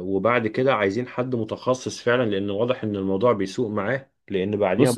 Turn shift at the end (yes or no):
no